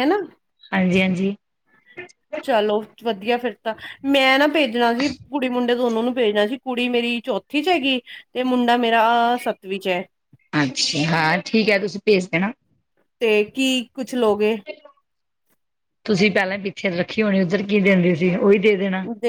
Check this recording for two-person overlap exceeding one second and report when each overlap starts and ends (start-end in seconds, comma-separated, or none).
none